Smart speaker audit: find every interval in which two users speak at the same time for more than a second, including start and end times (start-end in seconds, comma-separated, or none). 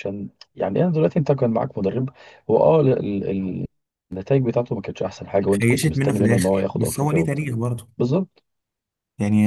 5.5-7.5